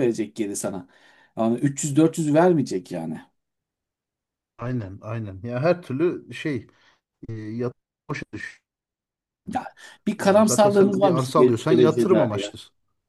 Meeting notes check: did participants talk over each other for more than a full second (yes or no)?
yes